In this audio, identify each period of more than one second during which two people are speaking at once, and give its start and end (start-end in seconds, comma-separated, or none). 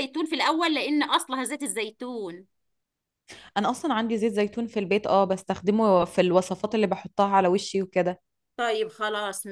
none